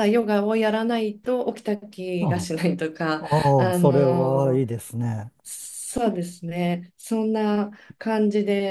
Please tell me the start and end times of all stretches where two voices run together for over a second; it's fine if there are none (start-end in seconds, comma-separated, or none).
3.2-4.6